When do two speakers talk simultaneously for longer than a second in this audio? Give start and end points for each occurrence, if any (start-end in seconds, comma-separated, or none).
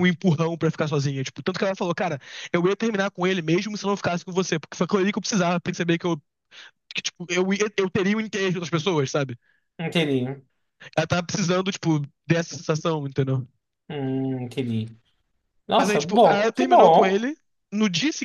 15.8-17.3